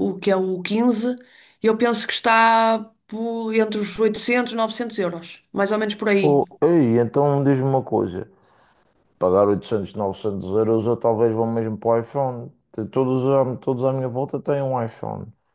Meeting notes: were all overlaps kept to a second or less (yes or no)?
yes